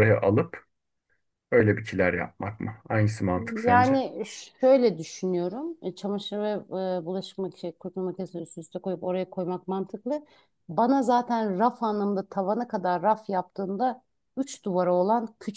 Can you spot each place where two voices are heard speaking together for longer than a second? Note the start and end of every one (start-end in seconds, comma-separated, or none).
none